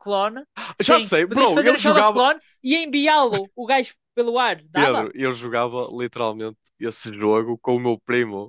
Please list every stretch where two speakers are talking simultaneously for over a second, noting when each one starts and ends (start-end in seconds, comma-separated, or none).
0.8-2.2